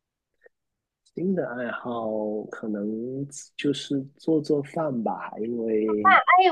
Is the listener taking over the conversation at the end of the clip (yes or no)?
yes